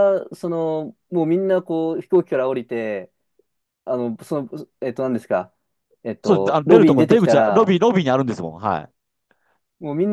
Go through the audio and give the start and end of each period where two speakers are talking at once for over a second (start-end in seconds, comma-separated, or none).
6.2-7.8